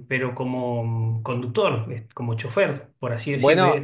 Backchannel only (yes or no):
no